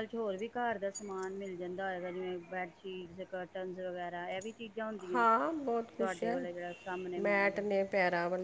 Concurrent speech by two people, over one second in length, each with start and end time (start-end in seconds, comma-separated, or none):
none